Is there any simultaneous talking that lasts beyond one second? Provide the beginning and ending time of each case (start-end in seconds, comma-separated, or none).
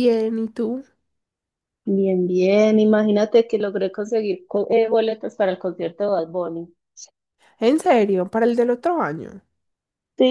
none